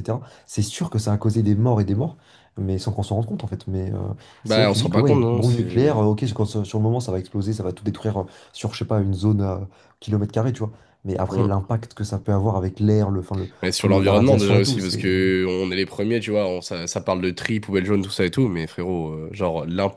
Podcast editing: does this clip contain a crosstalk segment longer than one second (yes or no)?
yes